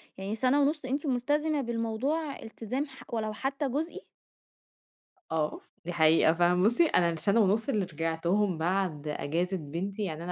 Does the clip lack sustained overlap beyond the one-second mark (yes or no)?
yes